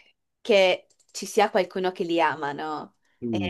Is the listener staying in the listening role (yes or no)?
no